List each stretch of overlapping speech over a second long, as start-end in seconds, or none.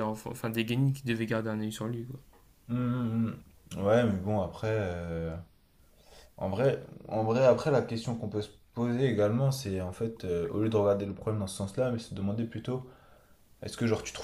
none